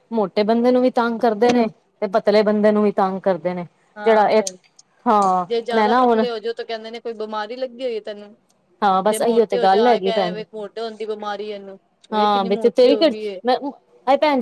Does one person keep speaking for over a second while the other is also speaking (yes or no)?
yes